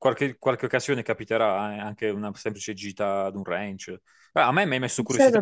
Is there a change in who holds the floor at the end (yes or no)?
no